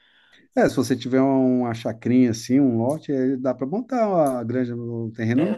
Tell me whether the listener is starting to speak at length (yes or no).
yes